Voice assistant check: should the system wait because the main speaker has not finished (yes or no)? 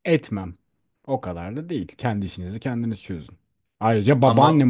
yes